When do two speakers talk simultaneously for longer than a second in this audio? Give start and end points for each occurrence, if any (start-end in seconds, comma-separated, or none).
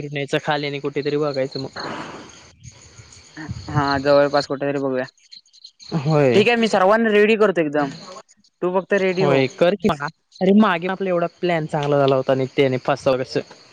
none